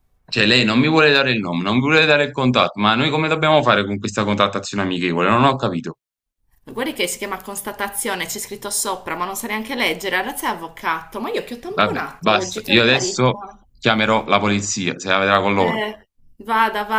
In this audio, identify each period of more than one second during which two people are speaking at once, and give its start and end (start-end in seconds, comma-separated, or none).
11.7-13.4